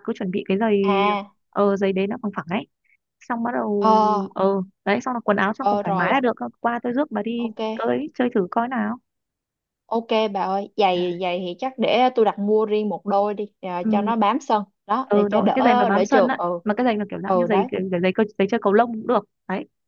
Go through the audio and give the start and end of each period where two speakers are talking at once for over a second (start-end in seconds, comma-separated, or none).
15.1-16.6